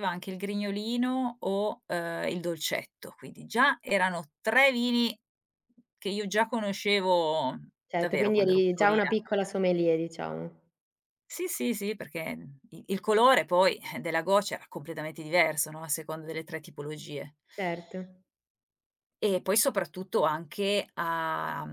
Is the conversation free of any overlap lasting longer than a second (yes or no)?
no